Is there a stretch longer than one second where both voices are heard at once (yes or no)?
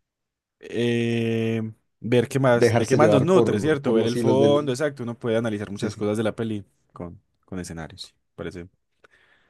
yes